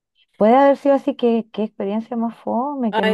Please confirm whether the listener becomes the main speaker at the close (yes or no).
yes